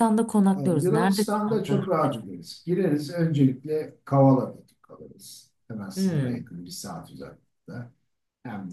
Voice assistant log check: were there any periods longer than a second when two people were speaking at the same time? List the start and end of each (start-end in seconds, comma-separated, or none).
0.6-2.2